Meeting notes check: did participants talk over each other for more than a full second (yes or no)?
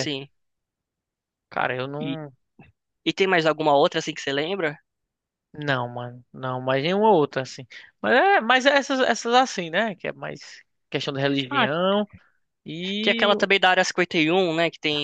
no